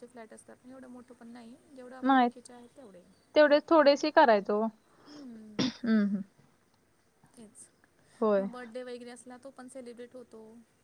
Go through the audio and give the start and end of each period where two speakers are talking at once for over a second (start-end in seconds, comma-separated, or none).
none